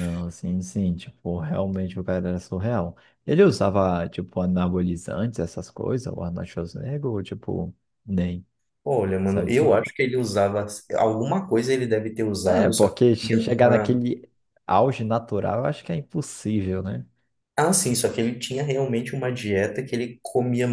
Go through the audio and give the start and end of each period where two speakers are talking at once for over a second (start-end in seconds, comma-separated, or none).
12.4-14.0